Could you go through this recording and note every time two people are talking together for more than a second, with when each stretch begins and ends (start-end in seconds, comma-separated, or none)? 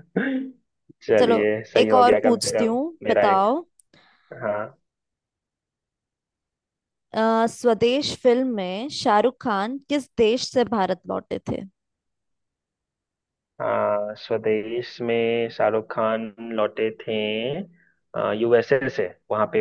1.2-3.5